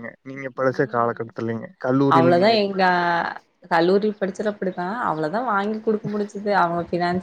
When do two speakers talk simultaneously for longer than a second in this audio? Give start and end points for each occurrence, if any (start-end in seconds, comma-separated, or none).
none